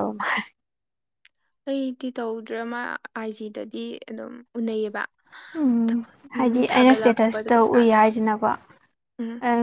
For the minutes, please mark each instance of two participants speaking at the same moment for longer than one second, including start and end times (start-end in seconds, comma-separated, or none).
6.4-8.0